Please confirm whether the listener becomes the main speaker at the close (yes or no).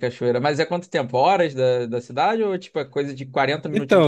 yes